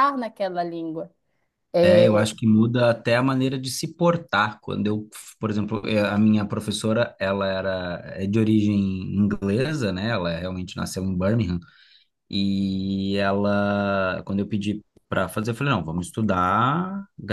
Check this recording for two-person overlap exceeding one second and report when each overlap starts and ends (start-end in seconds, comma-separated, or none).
none